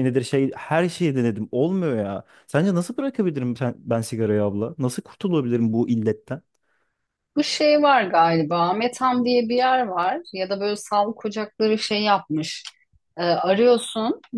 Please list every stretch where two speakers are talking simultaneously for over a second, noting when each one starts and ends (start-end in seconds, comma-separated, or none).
none